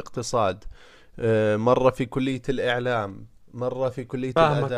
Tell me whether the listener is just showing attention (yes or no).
no